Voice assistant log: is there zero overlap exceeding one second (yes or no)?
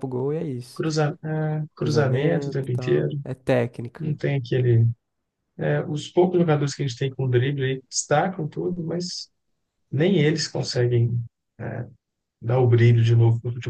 no